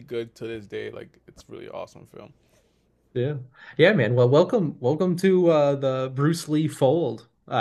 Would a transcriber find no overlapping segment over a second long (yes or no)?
yes